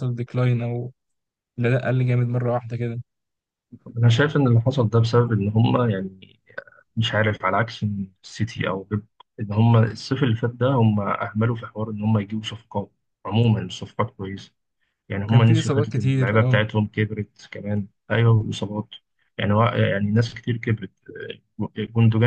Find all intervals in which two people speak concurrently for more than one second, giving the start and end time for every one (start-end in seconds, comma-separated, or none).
15.3-16.6